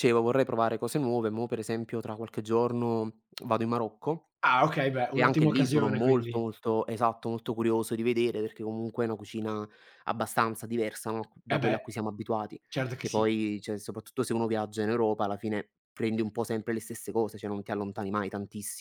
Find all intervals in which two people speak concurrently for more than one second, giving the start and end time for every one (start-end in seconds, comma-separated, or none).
5.1-6.4